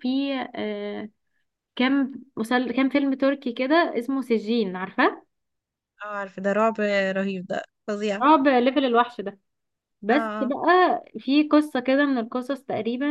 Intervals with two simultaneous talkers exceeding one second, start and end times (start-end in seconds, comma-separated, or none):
none